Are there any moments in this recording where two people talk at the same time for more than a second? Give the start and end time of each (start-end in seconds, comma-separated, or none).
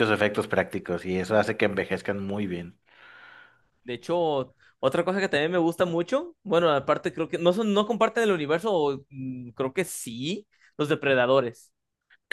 none